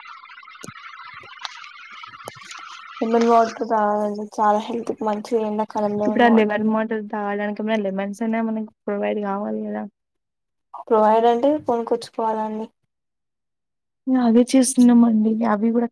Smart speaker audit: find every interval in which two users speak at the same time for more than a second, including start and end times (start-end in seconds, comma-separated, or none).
none